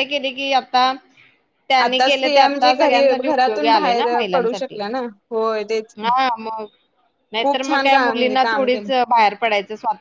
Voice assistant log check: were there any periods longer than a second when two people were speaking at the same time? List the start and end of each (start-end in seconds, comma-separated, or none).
1.8-4.8, 7.4-8.9